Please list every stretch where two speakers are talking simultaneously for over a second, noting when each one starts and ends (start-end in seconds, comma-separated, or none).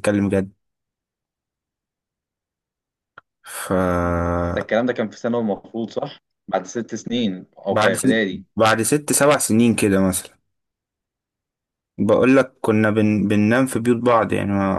none